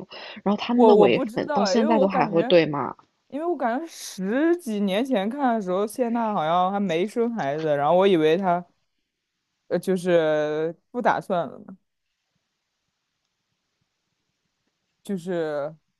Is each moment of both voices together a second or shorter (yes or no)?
no